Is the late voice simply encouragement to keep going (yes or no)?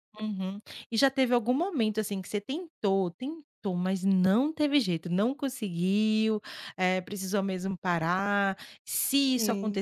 yes